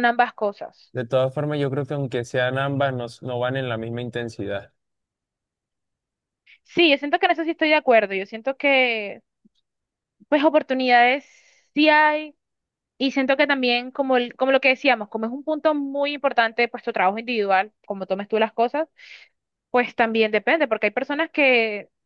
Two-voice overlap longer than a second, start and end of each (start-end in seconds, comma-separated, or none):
none